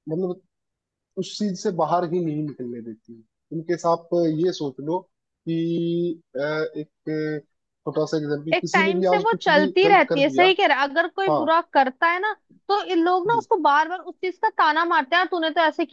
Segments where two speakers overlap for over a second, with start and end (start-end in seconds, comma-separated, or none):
8.5-10.5